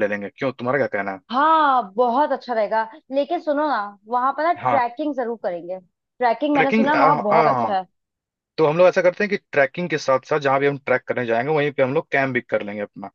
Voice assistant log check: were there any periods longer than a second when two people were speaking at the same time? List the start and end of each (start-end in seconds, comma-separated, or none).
6.5-7.8